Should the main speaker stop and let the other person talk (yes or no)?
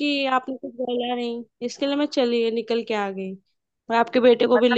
yes